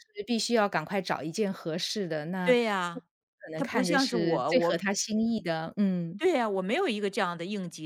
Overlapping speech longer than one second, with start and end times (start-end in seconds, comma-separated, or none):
3.6-4.9